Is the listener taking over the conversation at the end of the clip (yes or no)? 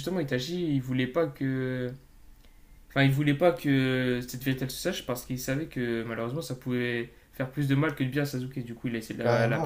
yes